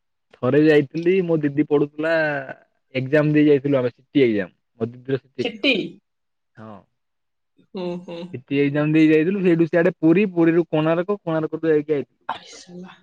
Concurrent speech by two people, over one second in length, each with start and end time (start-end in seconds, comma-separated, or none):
none